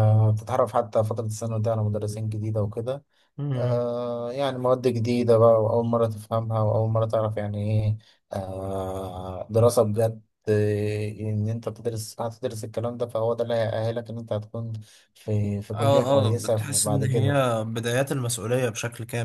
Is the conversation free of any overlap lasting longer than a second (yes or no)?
no